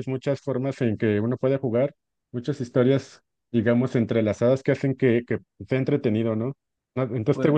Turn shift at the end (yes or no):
no